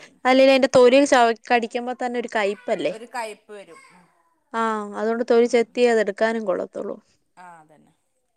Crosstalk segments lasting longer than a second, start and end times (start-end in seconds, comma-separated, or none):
none